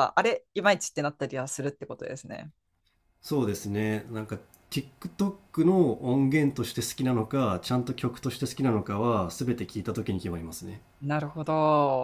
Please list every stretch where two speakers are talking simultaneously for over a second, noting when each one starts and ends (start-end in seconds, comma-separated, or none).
none